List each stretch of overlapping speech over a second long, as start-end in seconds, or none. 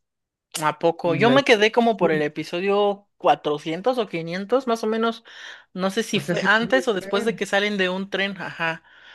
6.1-7.4